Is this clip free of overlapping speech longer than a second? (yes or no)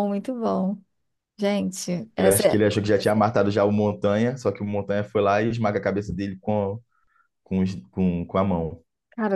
yes